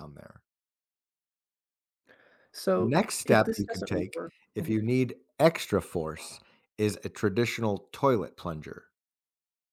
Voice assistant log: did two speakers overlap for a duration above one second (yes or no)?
yes